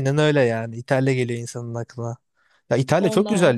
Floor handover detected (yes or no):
no